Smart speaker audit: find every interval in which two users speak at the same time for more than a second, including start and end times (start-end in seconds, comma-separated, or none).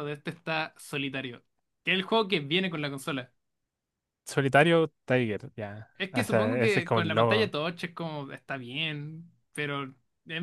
6.0-7.5